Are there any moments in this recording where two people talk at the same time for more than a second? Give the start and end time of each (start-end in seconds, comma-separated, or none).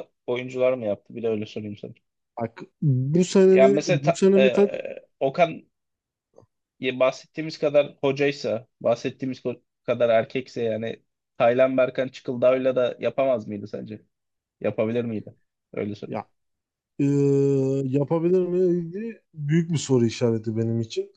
3.5-4.7